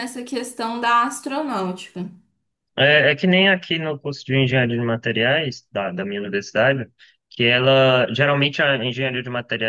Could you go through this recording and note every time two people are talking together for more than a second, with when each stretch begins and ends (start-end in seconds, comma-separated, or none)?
none